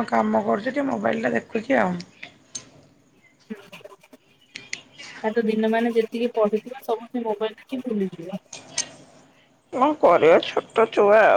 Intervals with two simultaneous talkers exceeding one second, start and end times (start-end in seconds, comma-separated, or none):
none